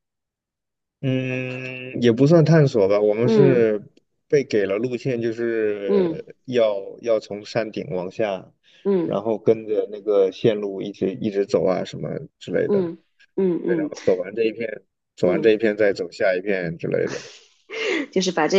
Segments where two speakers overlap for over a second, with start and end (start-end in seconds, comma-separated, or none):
none